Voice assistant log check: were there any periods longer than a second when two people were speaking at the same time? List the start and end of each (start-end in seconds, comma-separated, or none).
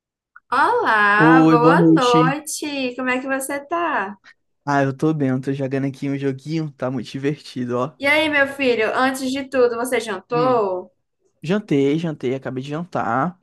1.1-2.4